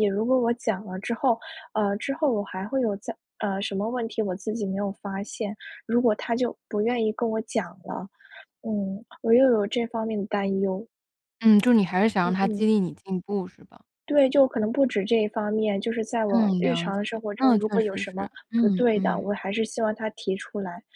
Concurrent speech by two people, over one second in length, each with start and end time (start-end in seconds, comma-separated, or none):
16.3-19.3